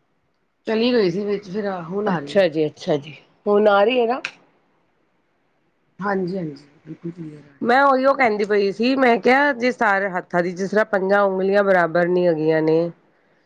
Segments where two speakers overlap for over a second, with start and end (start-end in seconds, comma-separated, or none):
none